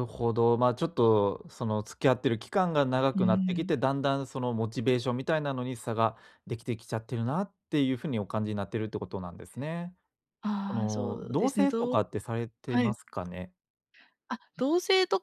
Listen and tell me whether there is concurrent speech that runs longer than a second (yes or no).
yes